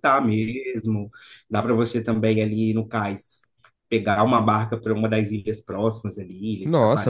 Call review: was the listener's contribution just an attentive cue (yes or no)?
no